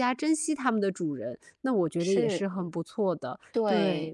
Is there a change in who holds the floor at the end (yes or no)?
yes